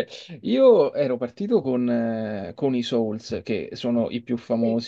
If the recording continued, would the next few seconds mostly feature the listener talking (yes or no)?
no